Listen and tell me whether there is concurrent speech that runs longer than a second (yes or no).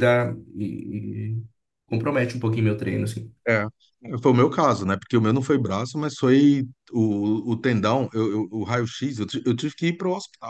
no